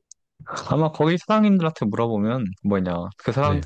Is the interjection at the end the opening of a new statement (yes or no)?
no